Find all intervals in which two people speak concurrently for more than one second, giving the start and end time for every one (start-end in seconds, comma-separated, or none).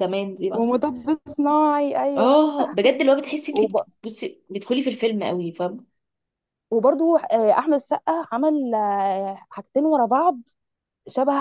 none